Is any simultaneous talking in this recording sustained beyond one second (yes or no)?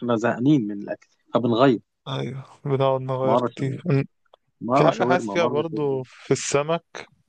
yes